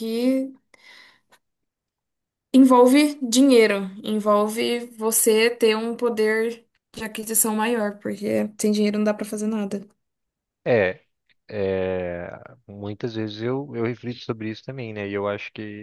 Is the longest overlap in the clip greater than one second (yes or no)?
no